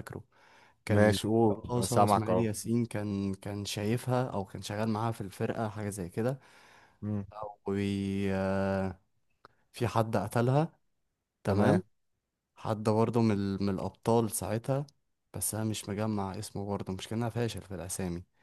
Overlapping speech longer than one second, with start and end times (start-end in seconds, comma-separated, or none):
0.9-2.5